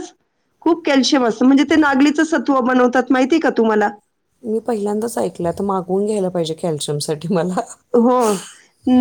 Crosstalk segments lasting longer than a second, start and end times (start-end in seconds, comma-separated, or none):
none